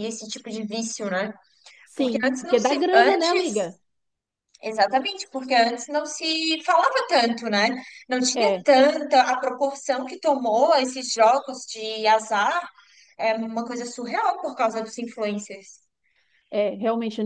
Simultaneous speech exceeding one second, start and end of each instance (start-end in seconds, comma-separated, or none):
1.9-3.7